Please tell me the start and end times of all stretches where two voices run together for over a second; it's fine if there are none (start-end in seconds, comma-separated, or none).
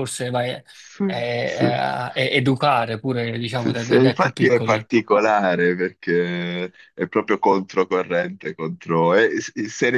3.5-4.9